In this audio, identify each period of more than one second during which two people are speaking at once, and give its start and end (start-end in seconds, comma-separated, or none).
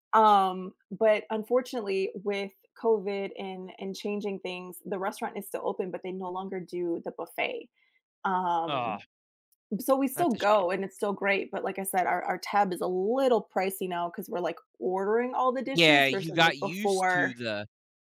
15.7-17.3